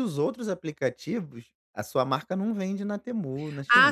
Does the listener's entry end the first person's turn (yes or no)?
yes